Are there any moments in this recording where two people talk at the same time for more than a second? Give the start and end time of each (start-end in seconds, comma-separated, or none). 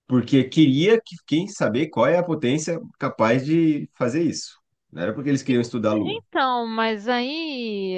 none